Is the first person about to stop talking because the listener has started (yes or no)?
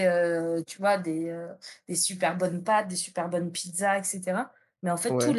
no